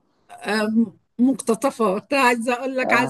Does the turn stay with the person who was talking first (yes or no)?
yes